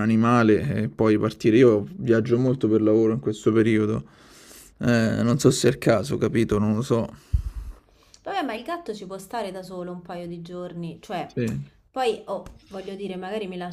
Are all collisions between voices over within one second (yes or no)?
yes